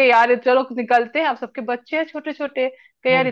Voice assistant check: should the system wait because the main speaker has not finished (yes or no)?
yes